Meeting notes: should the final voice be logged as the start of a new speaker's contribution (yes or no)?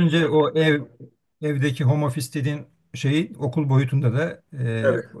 no